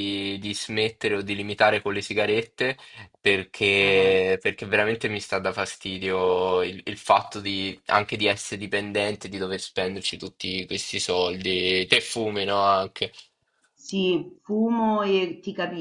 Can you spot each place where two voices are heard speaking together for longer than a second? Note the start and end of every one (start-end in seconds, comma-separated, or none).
none